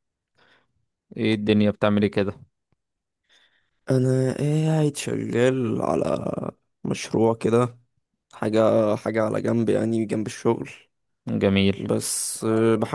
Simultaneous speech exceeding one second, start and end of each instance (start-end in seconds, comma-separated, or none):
none